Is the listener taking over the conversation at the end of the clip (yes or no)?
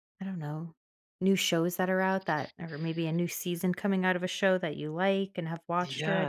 yes